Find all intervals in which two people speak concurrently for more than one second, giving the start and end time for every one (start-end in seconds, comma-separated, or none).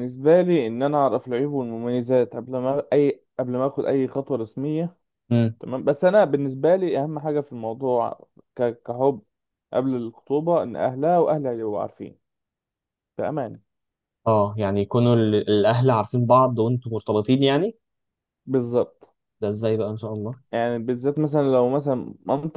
none